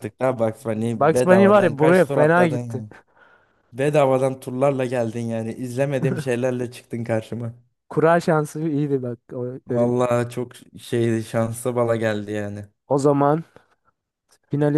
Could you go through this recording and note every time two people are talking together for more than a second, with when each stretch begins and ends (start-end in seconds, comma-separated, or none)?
0.9-2.8